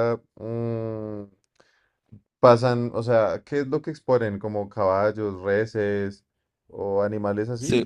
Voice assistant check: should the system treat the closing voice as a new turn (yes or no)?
yes